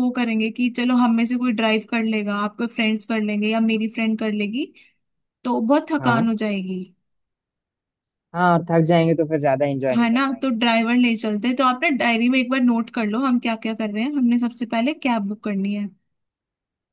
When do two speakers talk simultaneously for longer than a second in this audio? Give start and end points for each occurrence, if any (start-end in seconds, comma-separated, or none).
none